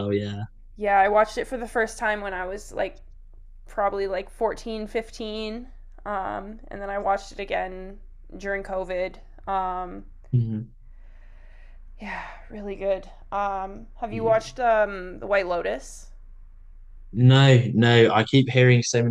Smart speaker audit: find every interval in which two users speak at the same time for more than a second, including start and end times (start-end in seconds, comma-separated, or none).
none